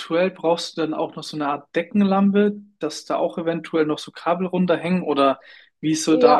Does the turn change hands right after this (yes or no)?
yes